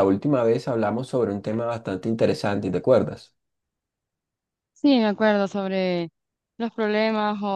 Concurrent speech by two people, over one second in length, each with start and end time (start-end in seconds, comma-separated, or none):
none